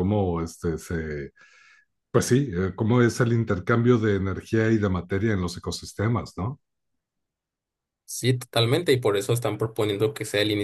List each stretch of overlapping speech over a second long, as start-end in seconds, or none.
none